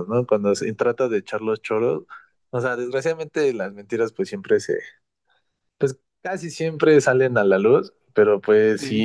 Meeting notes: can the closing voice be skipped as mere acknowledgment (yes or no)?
yes